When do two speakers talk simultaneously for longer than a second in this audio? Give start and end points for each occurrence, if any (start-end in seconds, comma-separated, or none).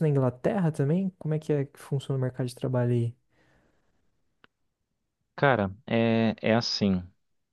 none